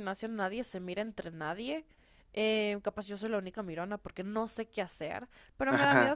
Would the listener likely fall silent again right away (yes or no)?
yes